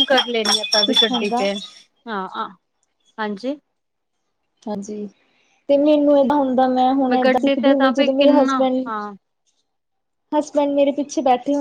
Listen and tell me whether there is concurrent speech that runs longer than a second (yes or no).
yes